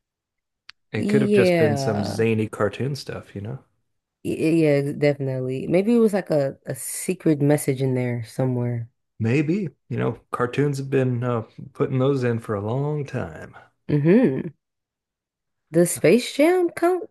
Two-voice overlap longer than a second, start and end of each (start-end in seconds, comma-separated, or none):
0.9-2.2